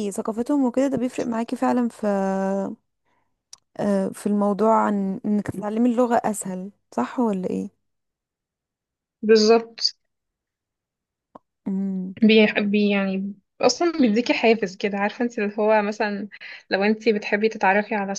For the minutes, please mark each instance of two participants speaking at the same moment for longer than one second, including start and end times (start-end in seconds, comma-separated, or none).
none